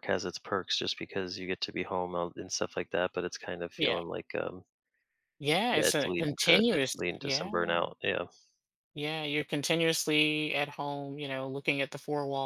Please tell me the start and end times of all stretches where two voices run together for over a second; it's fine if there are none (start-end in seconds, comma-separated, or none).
5.7-7.5